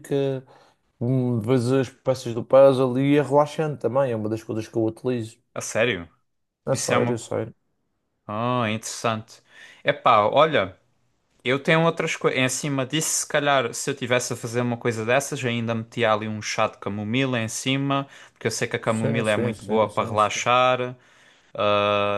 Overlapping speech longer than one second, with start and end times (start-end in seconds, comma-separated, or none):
18.9-20.5